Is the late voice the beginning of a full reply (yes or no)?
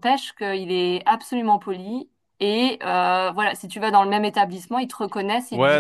yes